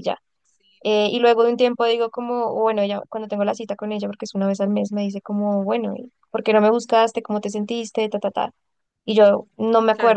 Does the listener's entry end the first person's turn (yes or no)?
no